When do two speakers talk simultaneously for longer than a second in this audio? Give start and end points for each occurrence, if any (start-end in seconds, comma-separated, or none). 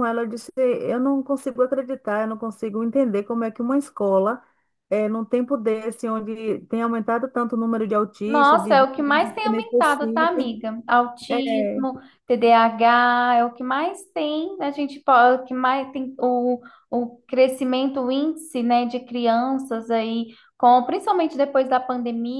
8.2-10.5